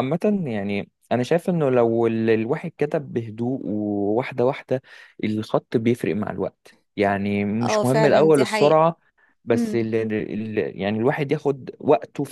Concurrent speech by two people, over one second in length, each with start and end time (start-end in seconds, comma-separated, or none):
7.6-8.8